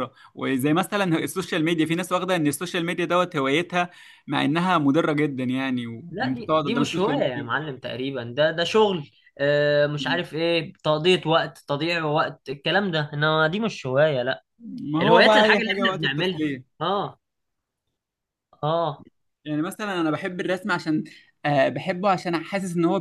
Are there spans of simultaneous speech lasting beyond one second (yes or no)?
yes